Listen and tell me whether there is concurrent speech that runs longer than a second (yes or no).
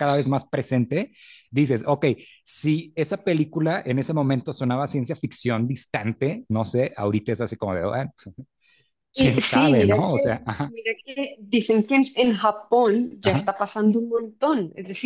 yes